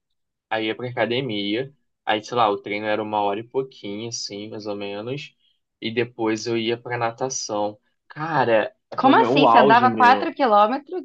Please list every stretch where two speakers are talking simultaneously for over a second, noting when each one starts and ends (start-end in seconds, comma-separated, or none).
9.0-10.3